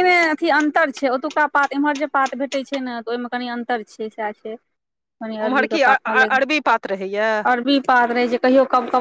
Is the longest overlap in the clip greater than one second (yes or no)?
yes